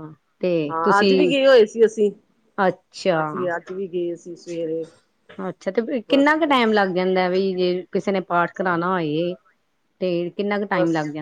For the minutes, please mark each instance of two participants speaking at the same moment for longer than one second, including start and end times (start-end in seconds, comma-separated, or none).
none